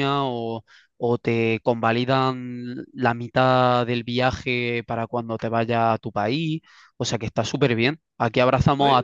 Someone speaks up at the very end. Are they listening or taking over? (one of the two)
listening